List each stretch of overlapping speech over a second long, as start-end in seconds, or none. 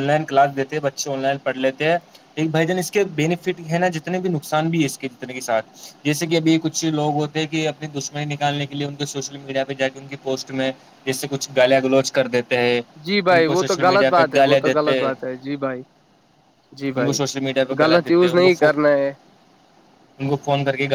13.3-15.1